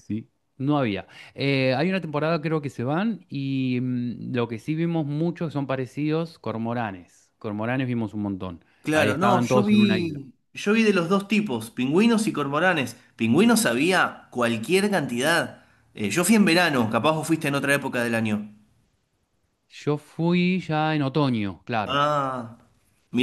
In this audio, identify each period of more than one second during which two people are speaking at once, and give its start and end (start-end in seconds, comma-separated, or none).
8.8-10.2